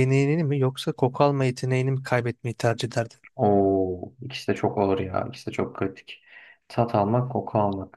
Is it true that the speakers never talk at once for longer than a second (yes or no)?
yes